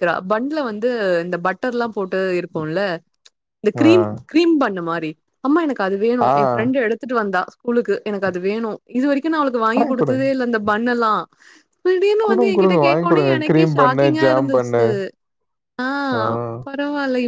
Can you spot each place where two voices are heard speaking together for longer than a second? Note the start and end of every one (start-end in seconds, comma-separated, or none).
12.3-14.8